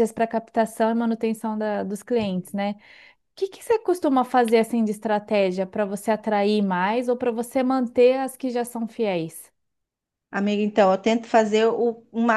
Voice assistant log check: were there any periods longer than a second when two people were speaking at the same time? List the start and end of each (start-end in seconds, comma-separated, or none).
none